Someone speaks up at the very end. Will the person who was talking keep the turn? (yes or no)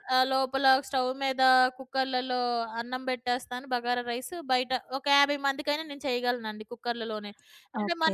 no